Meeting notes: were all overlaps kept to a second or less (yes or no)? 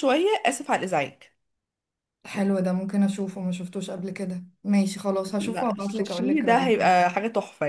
no